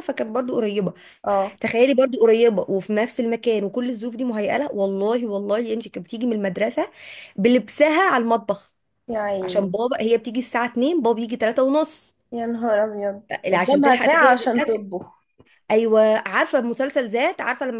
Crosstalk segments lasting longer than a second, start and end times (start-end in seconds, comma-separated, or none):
13.5-14.8